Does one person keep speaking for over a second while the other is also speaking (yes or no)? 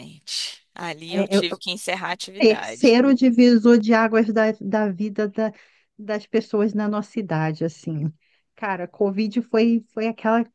no